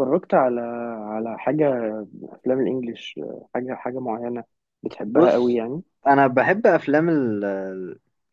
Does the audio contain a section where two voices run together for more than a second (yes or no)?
no